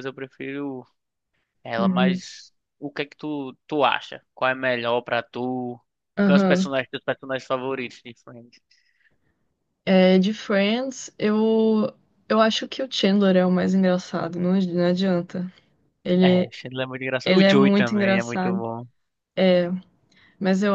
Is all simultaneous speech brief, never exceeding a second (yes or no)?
no